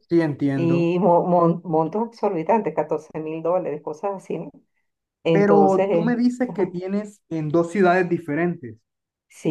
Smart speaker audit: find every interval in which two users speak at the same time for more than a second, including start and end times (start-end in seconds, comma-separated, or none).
5.3-6.8